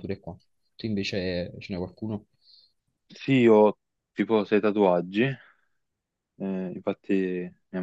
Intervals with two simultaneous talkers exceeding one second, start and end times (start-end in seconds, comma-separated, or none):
none